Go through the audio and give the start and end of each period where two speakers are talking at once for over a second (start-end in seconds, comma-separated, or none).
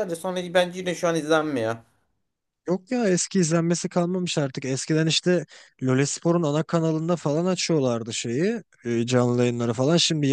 none